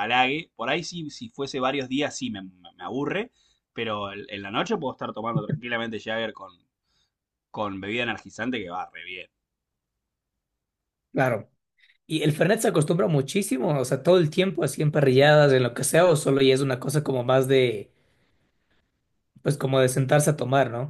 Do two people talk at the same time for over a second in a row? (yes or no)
no